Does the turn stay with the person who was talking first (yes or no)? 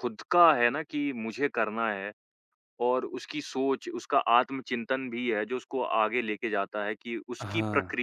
yes